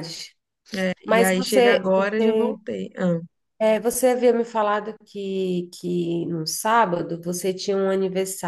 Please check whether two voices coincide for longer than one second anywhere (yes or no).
yes